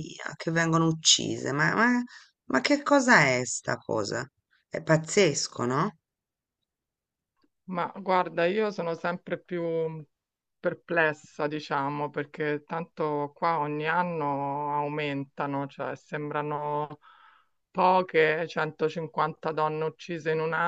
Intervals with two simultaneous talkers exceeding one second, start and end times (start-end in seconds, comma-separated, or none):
none